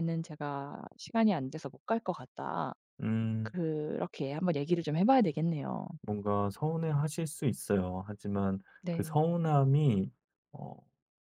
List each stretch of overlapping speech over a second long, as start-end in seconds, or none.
none